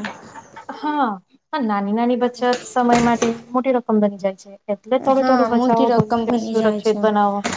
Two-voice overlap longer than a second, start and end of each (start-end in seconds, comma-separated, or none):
5.2-7.0